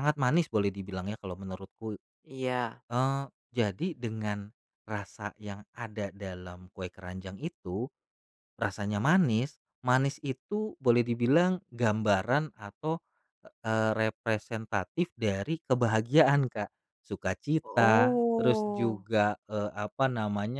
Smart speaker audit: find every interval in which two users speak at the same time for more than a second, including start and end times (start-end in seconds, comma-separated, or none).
17.6-19.1